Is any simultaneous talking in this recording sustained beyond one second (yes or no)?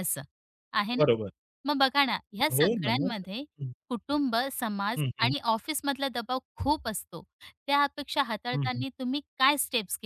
no